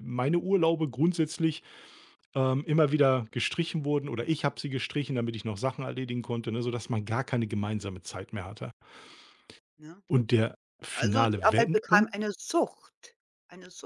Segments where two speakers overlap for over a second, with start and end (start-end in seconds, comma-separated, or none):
10.9-12.2